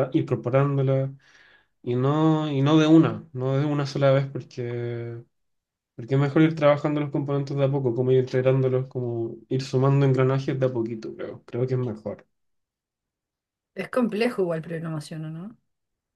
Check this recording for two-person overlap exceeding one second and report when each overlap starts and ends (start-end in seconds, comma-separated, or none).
none